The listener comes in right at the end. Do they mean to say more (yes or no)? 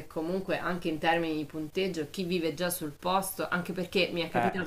no